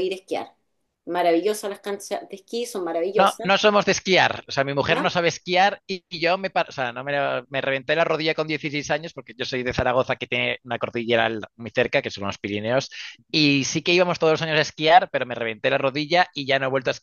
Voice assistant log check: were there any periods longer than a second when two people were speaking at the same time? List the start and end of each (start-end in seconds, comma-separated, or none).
none